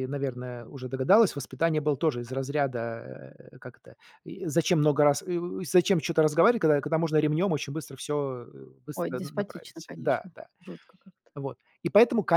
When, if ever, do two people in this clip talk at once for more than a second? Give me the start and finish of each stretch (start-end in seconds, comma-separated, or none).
8.9-10.5